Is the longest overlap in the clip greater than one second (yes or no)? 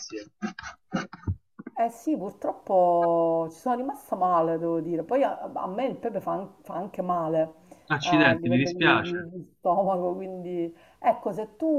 yes